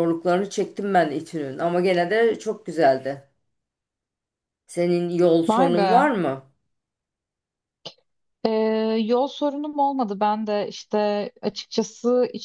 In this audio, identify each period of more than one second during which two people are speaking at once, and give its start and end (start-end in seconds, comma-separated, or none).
none